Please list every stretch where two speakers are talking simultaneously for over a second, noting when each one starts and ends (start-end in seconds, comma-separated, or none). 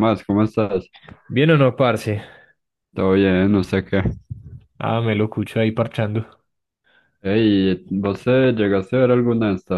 none